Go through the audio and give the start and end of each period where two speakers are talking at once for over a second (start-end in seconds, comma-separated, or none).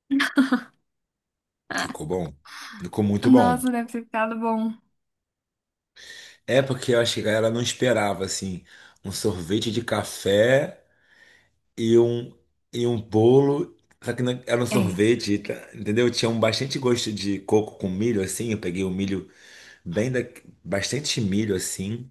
none